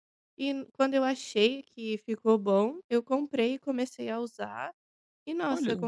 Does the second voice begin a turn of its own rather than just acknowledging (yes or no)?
no